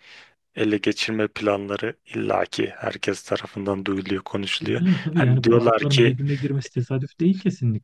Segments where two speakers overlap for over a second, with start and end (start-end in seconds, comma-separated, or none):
4.6-6.2